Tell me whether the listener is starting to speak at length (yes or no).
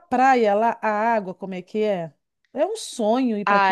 yes